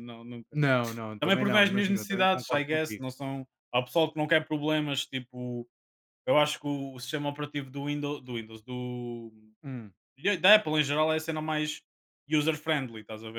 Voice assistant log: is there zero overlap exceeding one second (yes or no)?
no